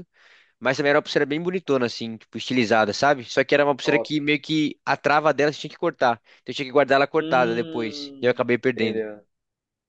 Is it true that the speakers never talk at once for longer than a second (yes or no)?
no